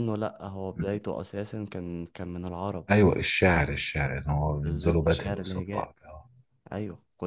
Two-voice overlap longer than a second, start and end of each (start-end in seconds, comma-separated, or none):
4.6-5.9